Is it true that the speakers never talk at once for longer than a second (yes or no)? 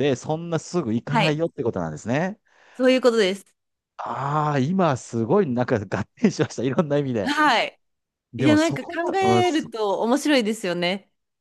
no